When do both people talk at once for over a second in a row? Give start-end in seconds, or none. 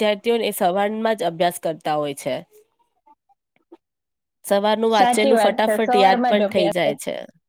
4.9-6.9